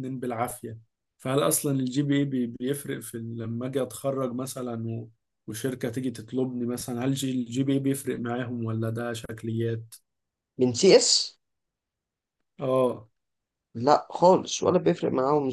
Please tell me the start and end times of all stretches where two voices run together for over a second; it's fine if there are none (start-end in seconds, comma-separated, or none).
none